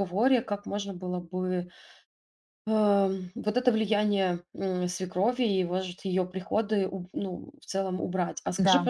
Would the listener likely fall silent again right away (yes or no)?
yes